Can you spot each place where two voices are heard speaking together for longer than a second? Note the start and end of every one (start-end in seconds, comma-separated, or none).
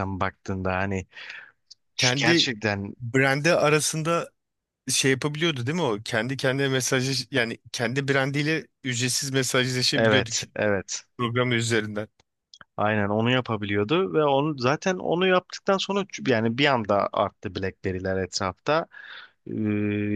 none